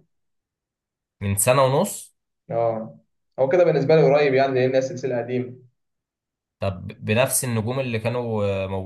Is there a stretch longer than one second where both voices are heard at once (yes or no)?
no